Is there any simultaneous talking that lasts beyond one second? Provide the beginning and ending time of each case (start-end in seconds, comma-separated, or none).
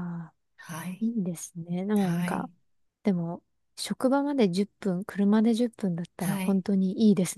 none